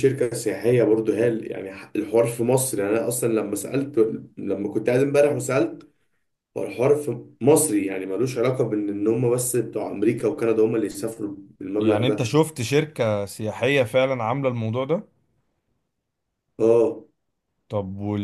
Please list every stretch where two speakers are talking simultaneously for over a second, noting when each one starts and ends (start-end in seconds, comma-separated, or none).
none